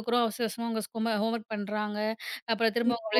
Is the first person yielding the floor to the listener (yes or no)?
no